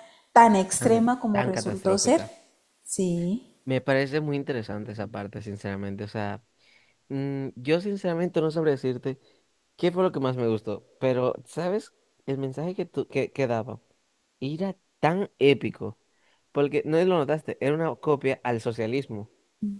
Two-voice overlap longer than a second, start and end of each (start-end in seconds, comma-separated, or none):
0.8-2.2